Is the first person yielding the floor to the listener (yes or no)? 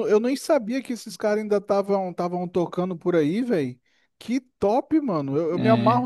no